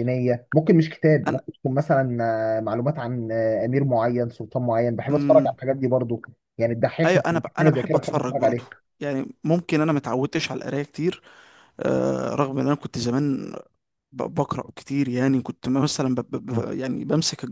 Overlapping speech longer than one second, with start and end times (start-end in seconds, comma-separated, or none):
7.0-8.6